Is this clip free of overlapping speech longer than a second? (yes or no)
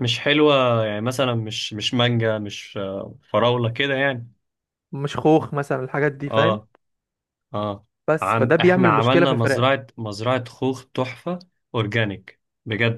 no